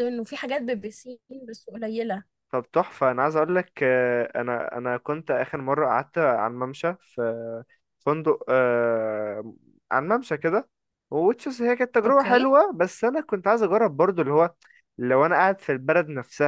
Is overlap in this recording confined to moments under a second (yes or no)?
yes